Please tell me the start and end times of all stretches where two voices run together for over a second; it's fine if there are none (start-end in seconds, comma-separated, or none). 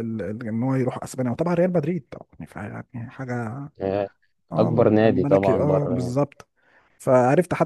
4.6-6.2